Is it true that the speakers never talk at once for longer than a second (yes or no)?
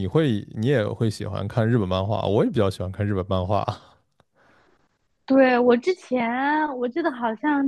yes